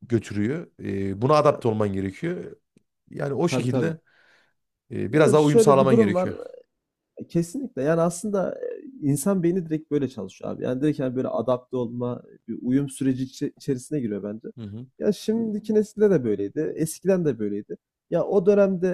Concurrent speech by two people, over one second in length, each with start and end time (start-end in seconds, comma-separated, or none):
5.1-6.3